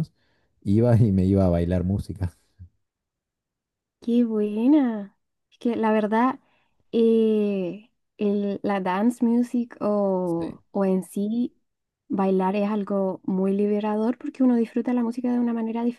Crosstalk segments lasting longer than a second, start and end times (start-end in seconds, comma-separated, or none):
none